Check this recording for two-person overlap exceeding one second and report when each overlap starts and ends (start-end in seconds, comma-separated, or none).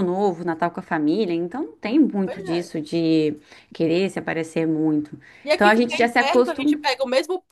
5.5-6.8